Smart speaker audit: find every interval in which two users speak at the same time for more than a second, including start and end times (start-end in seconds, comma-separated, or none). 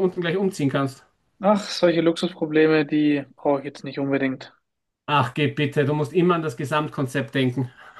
none